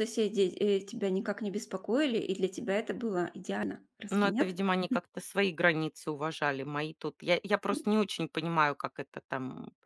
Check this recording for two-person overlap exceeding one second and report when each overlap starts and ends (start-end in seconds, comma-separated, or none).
none